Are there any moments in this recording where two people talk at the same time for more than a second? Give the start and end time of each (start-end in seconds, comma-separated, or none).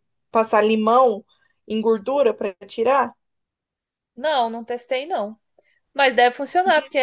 none